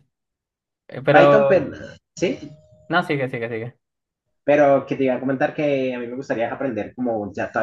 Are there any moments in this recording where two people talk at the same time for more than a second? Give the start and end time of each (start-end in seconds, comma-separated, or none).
none